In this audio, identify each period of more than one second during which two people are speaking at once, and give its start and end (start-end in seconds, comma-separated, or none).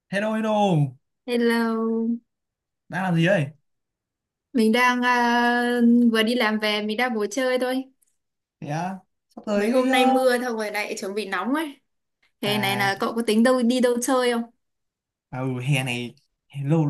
none